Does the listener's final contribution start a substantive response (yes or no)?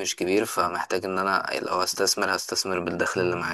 yes